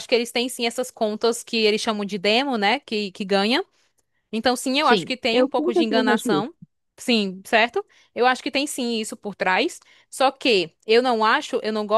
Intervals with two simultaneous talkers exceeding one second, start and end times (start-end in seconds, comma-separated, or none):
4.8-6.5